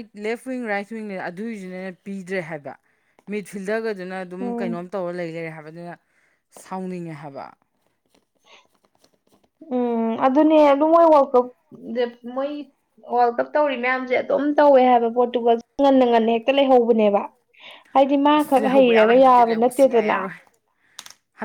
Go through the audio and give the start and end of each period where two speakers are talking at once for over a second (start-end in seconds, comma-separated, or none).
18.4-20.2